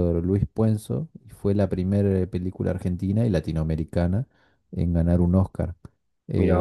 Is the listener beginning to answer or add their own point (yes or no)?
no